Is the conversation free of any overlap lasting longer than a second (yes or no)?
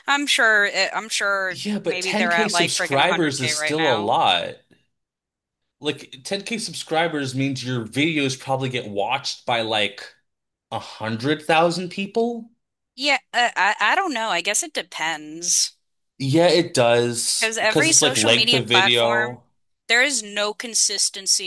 no